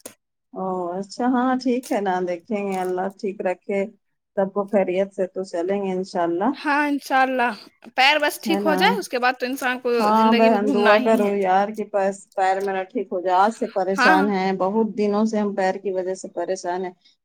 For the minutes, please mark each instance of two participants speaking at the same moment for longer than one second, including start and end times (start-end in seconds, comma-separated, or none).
none